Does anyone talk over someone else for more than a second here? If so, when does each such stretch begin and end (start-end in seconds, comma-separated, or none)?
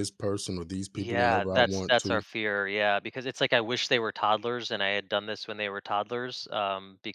1.0-2.2